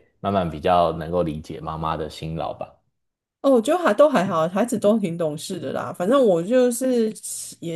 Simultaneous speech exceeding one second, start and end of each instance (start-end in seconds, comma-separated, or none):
none